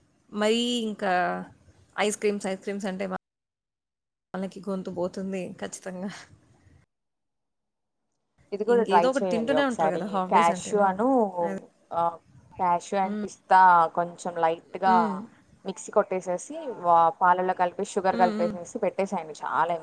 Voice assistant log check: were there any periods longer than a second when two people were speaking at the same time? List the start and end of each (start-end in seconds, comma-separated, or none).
8.8-10.9